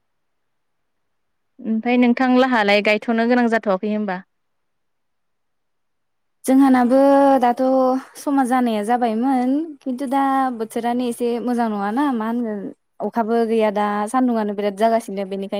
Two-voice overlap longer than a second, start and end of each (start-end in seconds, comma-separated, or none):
none